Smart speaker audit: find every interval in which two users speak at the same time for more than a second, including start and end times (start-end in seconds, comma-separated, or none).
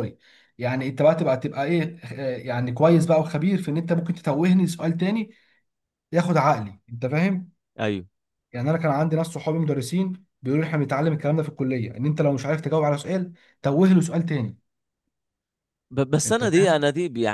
none